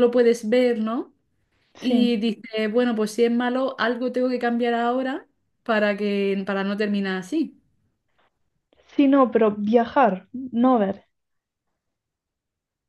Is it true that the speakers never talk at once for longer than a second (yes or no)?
yes